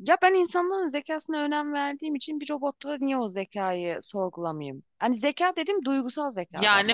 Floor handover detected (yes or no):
yes